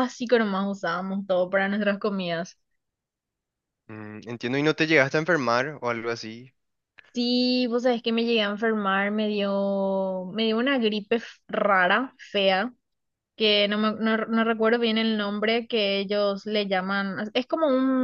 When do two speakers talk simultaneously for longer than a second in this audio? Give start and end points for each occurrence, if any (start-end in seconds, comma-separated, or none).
none